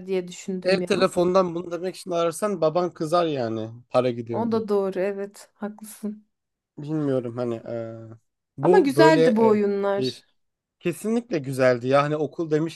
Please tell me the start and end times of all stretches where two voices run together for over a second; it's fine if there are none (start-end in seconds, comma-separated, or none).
8.6-10.2